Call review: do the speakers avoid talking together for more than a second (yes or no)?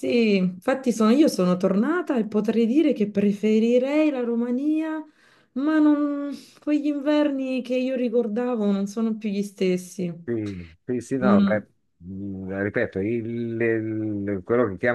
yes